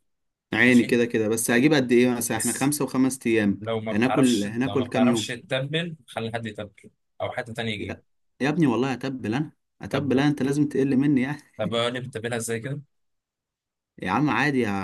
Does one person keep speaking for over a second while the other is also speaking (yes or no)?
yes